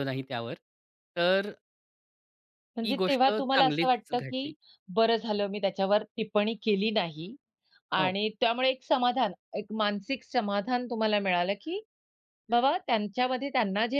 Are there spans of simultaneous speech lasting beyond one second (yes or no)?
yes